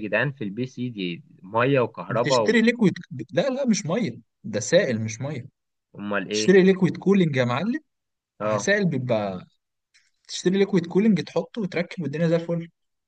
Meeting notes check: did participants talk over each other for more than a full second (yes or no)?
no